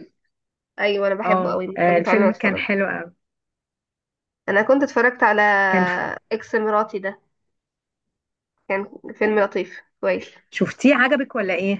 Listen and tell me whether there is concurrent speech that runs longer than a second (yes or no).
yes